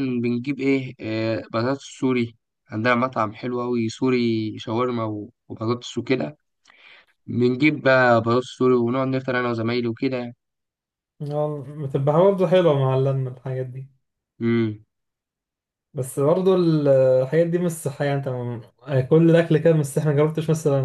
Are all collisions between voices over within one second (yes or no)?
yes